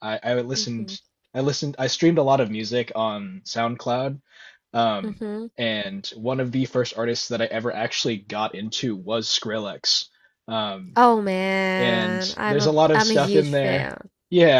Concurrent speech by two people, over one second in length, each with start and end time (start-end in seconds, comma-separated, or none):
11.8-13.9